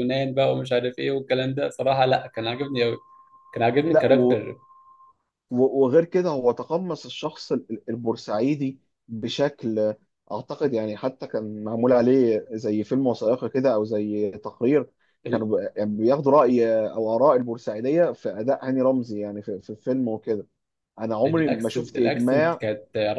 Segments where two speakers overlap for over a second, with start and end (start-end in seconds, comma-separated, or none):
21.3-22.6